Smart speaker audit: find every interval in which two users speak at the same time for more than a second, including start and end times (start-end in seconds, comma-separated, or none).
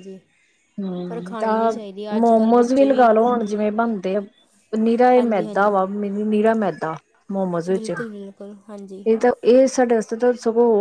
none